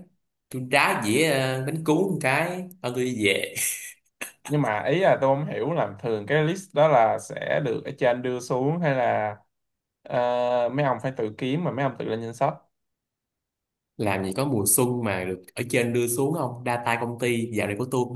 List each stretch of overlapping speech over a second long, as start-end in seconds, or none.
none